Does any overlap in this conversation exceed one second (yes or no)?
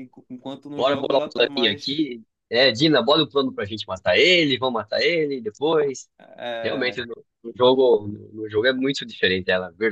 yes